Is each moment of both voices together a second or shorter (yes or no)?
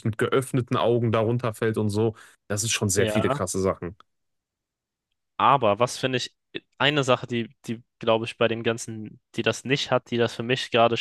yes